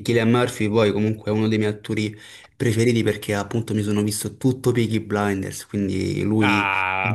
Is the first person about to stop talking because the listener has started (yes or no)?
yes